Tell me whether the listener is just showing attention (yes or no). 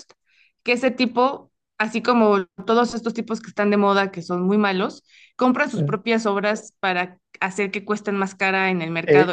no